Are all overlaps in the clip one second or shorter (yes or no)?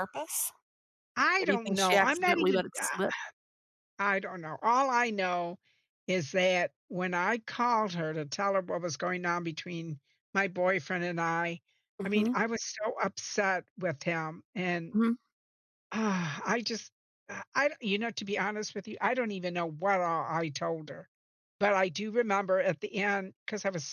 no